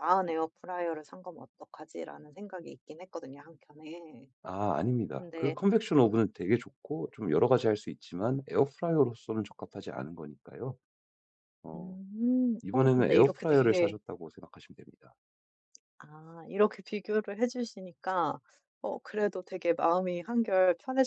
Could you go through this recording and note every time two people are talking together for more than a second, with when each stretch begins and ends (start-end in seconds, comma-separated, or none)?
12.6-13.9